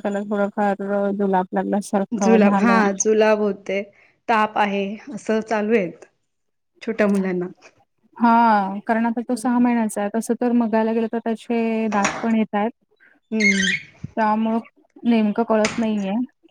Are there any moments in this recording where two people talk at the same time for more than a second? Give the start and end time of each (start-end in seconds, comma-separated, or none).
none